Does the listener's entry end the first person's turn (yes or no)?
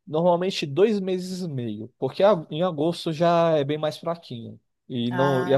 no